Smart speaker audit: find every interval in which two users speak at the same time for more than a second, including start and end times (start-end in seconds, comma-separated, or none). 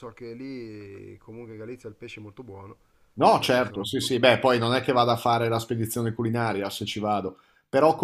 none